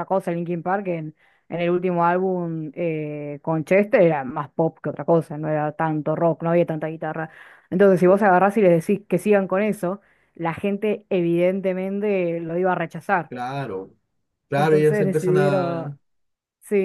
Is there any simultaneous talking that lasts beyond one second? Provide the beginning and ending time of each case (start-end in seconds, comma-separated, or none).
14.5-15.9